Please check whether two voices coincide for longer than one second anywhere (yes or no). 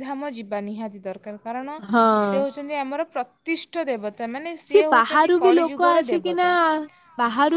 yes